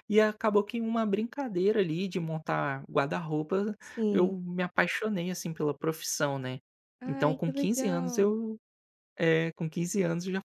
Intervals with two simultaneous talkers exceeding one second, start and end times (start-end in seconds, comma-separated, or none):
7.1-8.4